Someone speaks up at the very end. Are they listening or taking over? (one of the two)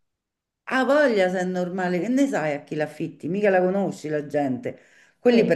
listening